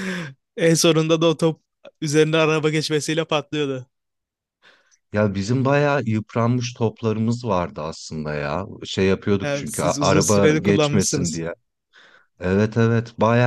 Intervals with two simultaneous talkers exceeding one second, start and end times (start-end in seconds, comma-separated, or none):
9.4-11.4